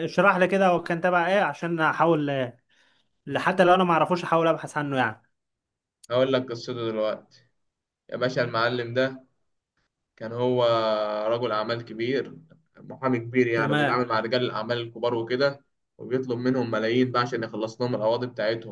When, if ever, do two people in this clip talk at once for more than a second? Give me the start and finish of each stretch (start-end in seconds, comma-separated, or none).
none